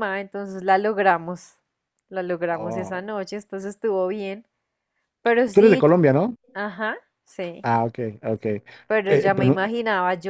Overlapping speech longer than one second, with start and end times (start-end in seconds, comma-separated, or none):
none